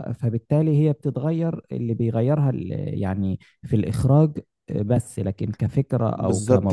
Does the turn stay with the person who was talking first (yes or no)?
no